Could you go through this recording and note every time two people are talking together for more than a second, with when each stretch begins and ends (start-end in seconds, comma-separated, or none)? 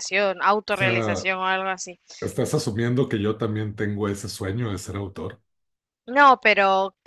none